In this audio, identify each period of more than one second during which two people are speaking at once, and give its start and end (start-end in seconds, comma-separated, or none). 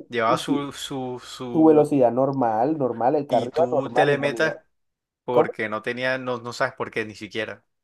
3.3-4.5